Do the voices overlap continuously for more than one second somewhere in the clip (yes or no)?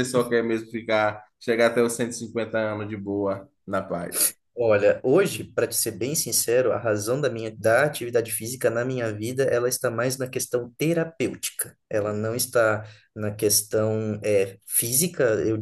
no